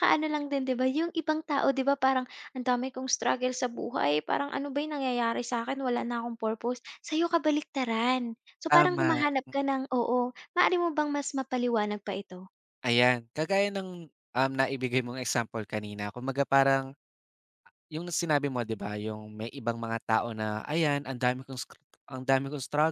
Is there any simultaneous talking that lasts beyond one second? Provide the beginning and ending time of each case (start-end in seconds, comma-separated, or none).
none